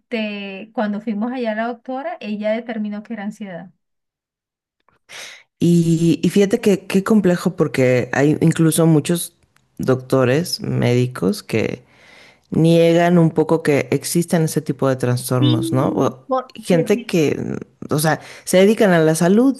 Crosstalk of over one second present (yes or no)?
yes